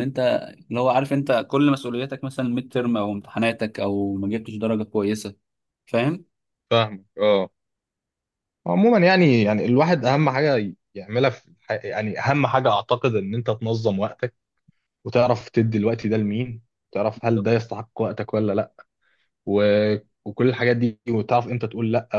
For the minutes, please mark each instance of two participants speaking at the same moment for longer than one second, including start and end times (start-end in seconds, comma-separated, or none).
none